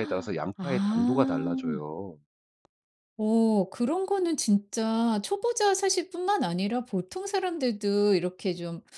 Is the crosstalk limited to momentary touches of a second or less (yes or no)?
no